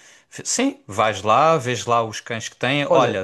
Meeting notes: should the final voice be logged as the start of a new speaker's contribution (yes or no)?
no